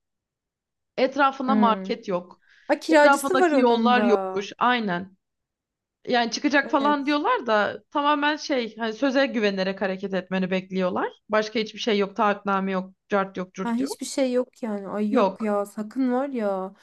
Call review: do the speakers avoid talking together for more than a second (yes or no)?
no